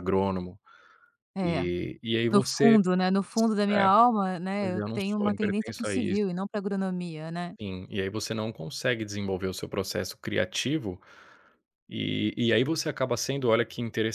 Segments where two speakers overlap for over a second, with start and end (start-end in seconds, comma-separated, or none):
4.6-6.2